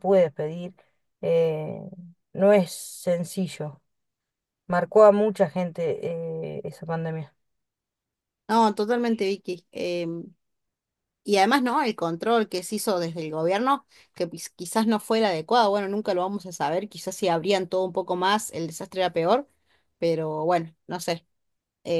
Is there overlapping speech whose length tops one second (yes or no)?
no